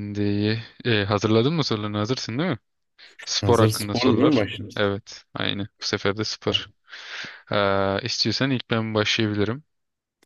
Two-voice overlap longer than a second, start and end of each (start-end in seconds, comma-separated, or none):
3.4-4.9